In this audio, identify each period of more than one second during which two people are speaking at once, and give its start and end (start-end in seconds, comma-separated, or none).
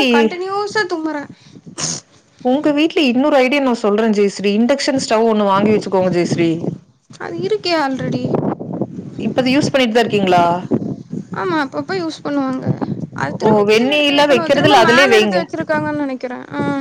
13.5-15.4